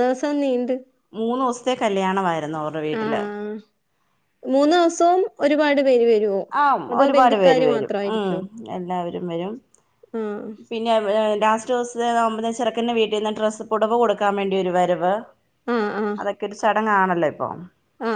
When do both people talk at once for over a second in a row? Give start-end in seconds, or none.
none